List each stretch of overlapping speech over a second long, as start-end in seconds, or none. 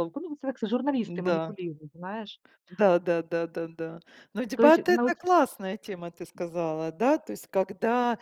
none